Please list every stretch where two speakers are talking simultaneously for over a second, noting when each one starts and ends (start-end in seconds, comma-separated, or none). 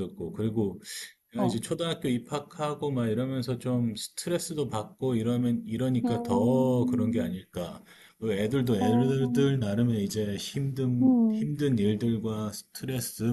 6.0-7.3